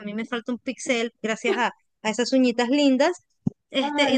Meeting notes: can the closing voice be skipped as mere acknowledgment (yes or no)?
yes